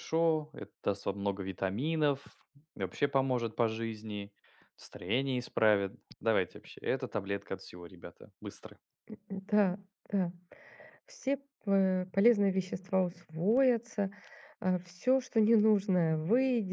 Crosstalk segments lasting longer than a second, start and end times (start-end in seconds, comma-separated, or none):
none